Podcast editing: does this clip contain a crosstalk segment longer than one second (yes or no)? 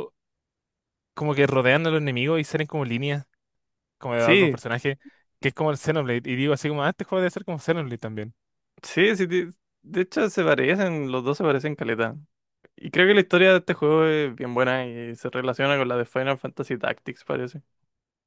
no